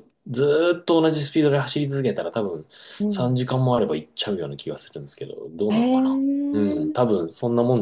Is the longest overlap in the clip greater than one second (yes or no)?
yes